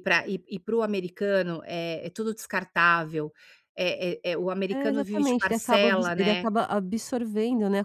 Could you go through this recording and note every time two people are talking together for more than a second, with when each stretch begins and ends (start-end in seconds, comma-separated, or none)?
4.7-6.5